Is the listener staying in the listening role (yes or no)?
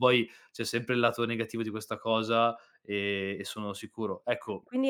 no